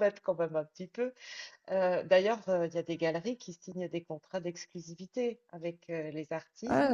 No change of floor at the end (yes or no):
yes